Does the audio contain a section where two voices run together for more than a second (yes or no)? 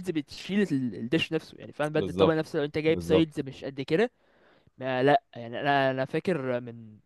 yes